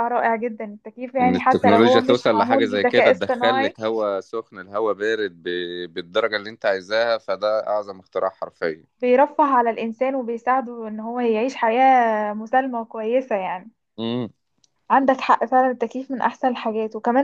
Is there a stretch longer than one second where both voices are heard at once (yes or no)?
yes